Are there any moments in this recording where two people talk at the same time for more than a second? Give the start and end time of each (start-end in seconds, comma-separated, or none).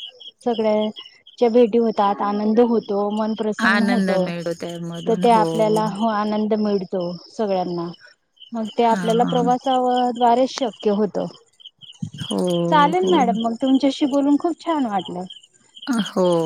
none